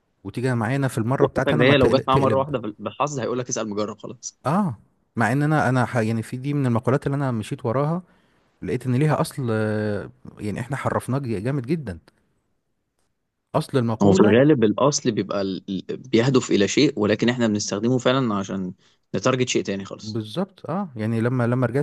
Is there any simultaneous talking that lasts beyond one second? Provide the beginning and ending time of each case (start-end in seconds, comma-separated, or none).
1.2-2.5